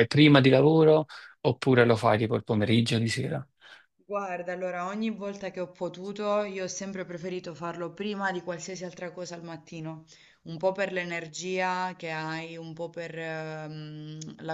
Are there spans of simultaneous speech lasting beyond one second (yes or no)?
no